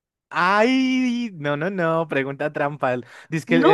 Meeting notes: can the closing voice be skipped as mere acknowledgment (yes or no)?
yes